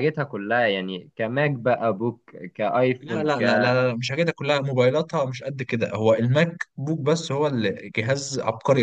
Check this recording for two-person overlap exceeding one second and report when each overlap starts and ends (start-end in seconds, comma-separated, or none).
none